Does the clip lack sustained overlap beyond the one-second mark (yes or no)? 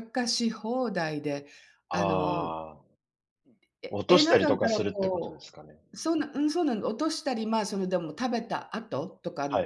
no